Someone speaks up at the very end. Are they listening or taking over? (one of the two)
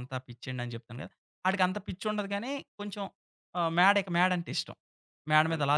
taking over